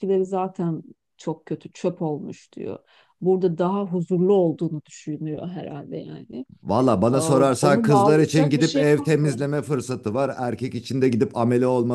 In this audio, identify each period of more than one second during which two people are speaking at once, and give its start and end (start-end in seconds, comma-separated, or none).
7.1-9.4